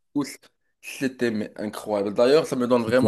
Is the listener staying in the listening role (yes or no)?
yes